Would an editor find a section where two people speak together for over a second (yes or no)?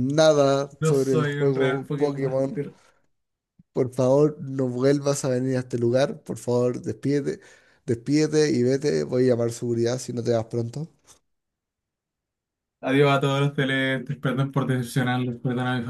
yes